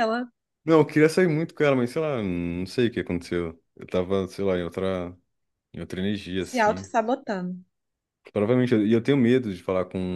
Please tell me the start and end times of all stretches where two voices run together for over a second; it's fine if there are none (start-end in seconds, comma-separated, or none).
none